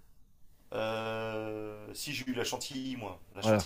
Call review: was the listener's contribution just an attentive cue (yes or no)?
no